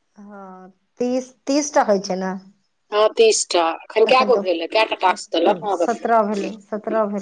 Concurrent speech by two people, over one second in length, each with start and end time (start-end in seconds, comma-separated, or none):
5.1-6.5